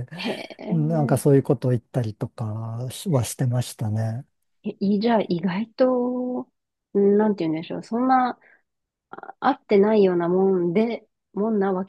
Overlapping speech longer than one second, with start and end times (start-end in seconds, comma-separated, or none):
none